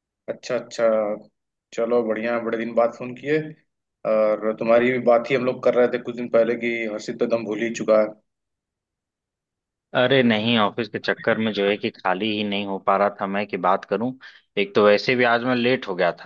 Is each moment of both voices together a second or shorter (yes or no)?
yes